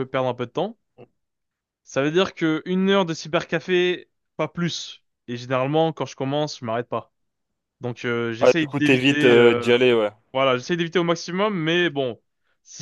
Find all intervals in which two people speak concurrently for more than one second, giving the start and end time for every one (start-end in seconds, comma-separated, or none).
8.4-9.7